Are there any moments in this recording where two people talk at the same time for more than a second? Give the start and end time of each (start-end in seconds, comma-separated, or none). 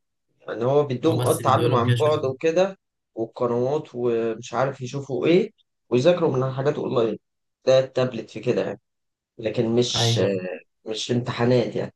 1.0-2.3